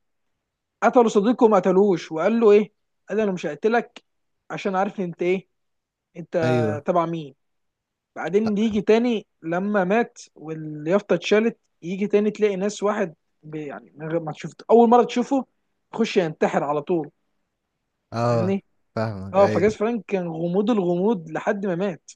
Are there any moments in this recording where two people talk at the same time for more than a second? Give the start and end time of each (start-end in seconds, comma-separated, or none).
none